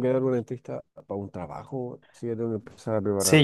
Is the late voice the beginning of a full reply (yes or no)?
yes